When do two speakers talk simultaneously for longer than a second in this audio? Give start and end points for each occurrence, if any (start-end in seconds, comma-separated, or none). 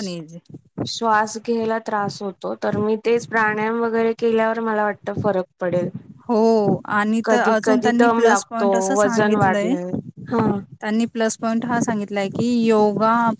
7.2-9.7